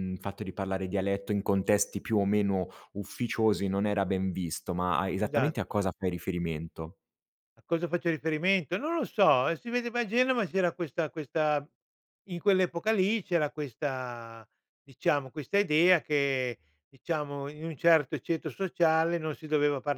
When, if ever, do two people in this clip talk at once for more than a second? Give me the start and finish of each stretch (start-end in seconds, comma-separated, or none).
none